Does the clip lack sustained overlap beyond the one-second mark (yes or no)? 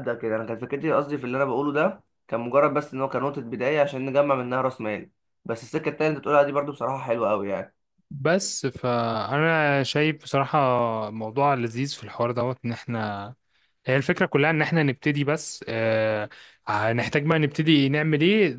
yes